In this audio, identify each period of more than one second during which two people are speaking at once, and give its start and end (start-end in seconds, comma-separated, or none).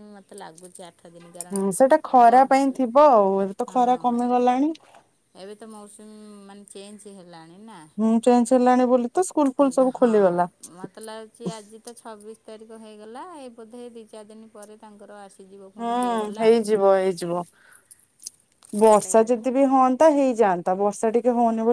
none